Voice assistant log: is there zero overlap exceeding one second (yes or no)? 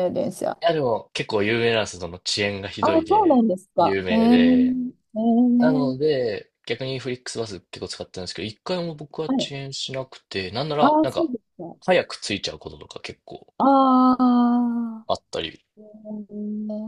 no